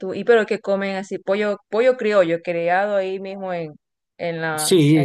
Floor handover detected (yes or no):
yes